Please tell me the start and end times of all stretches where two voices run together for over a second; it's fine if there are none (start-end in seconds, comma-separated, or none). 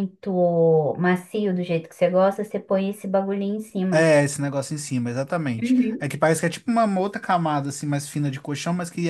none